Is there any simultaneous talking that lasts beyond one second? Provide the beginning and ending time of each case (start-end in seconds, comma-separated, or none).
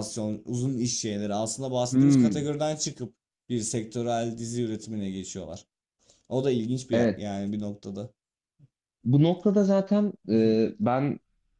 none